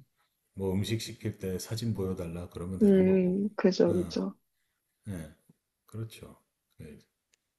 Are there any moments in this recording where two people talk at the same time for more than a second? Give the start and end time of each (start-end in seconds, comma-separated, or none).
2.8-4.3